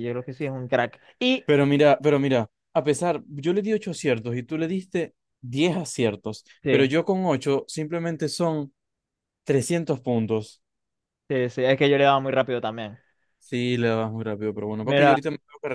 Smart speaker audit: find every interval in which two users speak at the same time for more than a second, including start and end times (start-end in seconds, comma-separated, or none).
none